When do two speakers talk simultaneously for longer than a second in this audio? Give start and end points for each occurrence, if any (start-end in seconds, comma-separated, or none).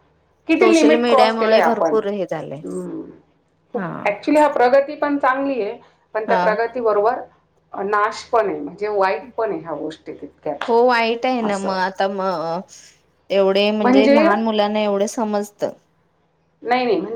0.6-1.9